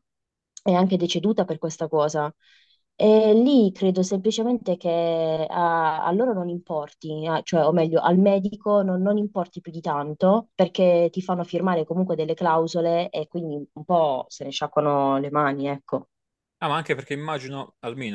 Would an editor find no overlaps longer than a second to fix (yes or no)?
yes